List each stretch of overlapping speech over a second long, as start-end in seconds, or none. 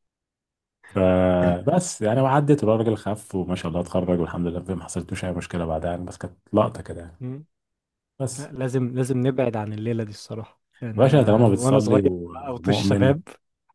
11.0-13.2